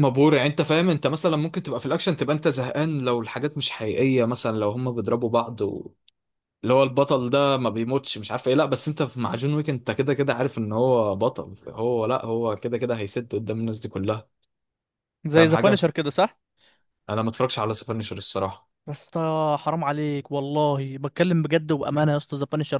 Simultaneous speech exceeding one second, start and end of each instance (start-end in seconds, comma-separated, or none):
none